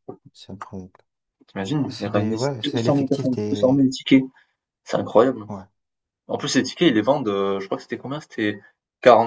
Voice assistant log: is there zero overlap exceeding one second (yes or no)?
no